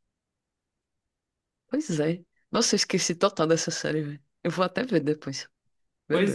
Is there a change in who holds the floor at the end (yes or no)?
yes